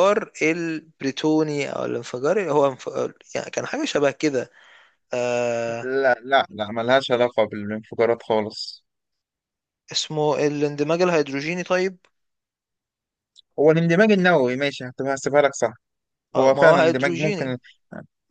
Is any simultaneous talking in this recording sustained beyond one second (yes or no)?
yes